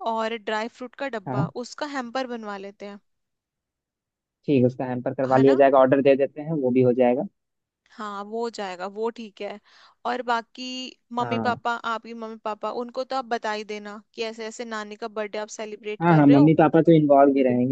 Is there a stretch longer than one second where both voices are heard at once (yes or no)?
no